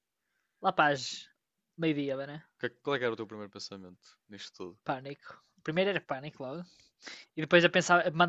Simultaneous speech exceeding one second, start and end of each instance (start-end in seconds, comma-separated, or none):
none